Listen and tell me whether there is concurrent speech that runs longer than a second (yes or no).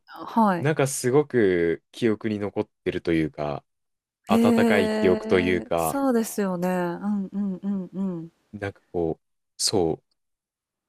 yes